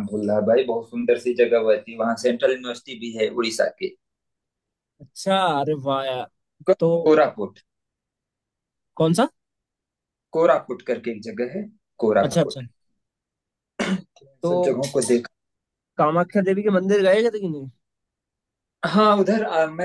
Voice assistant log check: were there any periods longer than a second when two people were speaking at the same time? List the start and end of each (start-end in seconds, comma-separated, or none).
none